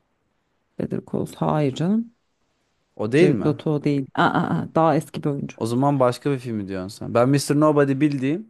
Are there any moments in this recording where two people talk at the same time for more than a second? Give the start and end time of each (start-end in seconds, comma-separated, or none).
none